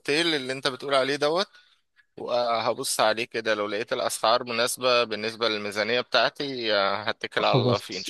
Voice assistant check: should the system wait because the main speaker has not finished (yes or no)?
no